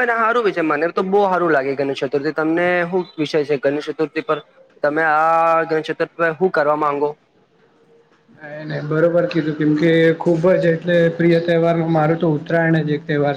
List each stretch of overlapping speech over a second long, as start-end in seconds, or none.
none